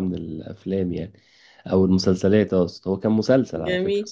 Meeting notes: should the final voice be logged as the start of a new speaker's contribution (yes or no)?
yes